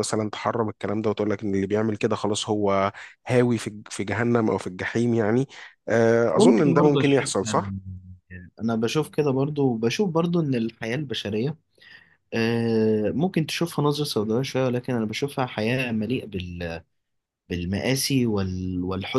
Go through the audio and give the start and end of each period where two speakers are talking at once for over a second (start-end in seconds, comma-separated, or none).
6.3-7.7